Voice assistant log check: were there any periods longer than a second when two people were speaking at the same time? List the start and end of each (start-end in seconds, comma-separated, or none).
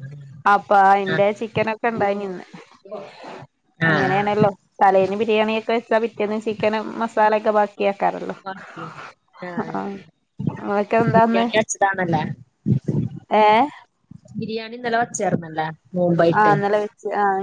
none